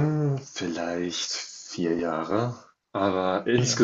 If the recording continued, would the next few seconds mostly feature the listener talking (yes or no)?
no